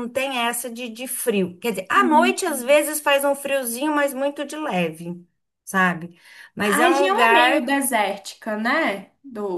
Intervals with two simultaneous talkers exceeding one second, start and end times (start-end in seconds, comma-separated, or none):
6.6-7.8